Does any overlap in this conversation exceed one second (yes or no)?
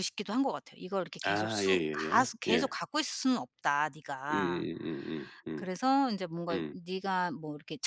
yes